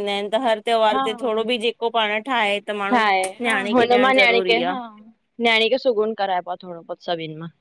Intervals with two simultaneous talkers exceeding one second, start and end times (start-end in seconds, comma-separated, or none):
none